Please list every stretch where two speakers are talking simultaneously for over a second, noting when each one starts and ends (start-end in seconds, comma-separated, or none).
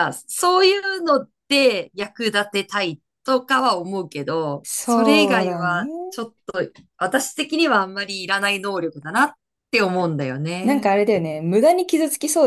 4.6-5.9